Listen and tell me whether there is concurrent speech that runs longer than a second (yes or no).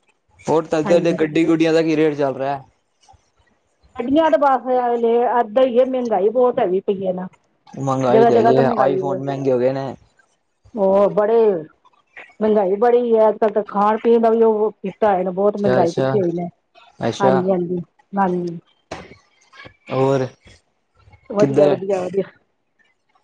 no